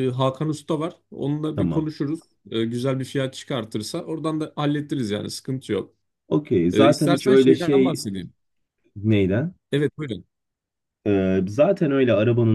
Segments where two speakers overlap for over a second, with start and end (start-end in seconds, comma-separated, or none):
6.7-8.0